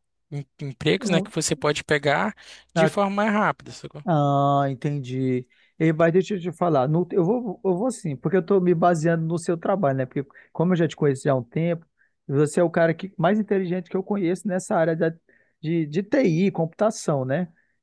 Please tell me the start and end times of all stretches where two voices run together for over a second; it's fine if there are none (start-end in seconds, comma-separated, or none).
none